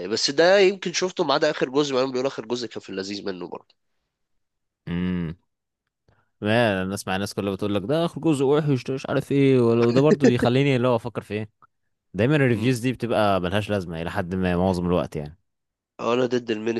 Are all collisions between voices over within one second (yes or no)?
yes